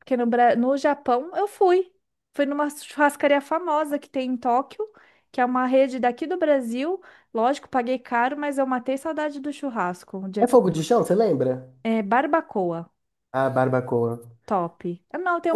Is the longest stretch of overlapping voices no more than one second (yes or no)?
yes